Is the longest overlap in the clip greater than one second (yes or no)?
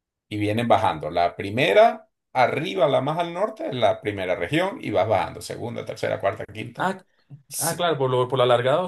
no